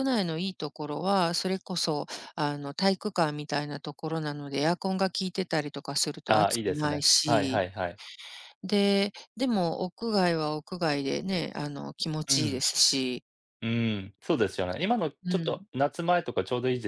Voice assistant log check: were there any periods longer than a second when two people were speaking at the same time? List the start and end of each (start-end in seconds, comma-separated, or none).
6.3-7.6